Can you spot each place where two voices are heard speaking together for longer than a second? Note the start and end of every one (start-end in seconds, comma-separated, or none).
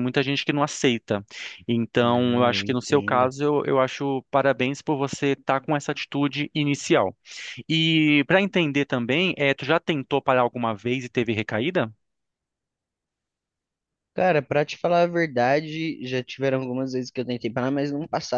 2.0-3.3